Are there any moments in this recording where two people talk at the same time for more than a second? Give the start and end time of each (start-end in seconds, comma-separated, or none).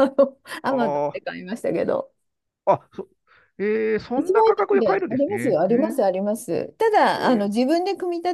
4.2-6.0